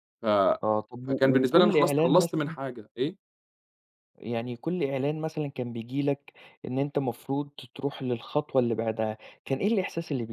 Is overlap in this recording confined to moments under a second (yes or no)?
no